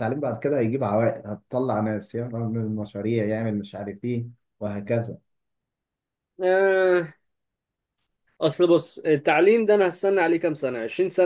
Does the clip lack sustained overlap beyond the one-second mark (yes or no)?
yes